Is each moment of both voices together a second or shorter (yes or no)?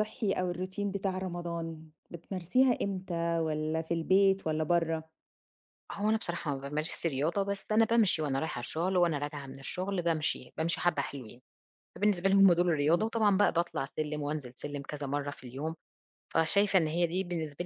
yes